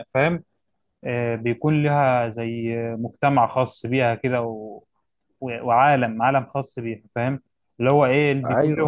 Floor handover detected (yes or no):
no